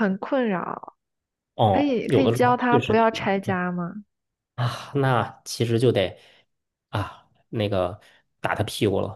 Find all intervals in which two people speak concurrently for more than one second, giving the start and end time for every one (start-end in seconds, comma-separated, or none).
1.7-3.6